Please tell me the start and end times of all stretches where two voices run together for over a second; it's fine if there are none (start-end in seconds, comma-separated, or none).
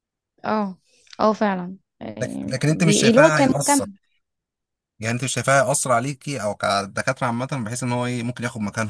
2.2-3.9